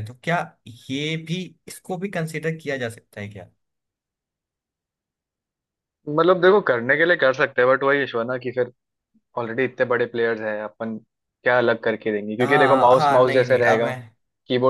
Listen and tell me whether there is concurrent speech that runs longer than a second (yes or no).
yes